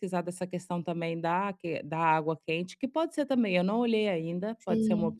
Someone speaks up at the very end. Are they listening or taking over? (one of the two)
taking over